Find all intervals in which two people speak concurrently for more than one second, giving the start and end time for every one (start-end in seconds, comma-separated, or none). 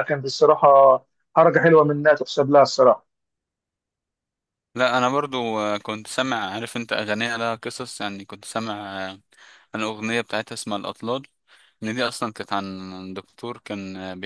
none